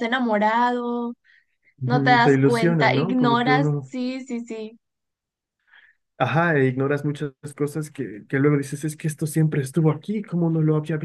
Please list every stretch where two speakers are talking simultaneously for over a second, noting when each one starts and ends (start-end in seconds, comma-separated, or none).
1.8-3.9